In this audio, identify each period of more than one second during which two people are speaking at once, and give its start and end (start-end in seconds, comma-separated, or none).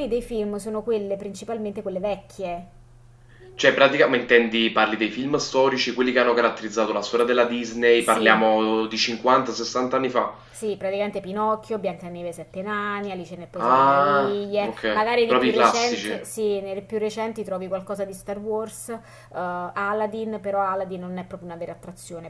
13.6-16.2